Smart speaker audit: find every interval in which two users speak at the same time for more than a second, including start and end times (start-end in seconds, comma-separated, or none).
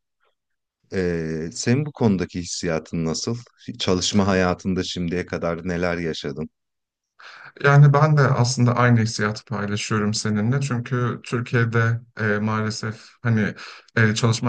none